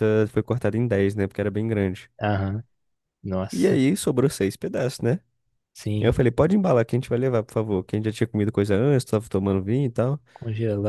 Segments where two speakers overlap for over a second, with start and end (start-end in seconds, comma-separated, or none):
none